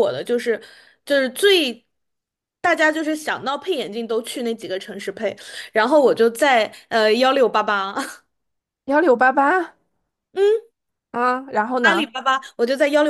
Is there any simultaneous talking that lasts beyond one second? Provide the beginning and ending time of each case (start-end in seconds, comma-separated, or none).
none